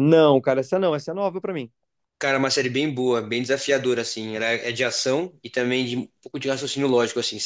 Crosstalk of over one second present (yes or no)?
no